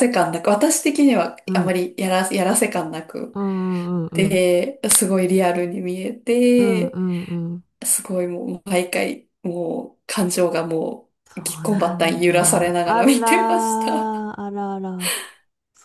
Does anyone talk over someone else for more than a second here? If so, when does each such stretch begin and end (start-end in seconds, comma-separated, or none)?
11.2-14.3